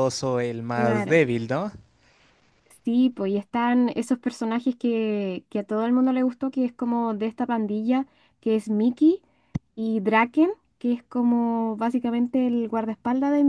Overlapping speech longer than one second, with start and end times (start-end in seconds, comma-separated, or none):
none